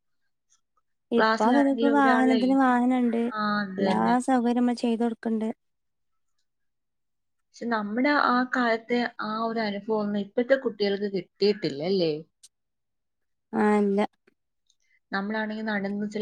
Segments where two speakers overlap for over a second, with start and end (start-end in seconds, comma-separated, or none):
1.2-2.4